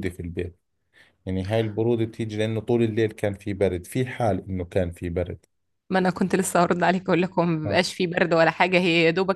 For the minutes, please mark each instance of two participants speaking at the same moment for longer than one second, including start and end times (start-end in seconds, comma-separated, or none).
none